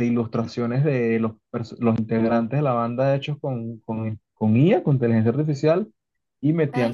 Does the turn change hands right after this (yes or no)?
no